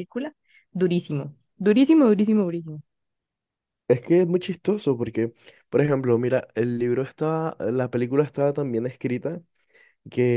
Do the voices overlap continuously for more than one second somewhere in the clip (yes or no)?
no